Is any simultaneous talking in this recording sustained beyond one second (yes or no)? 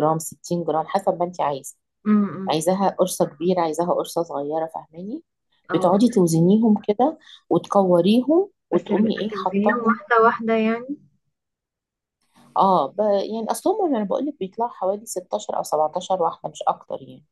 yes